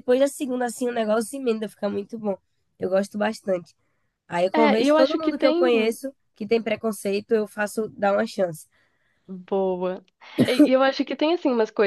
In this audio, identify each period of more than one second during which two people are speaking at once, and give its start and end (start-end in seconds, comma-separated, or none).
4.5-6.0